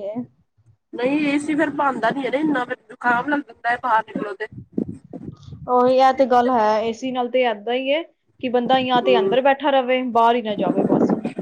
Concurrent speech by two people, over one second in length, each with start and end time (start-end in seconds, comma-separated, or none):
none